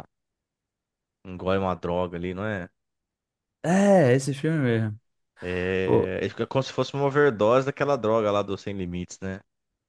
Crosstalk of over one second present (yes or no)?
no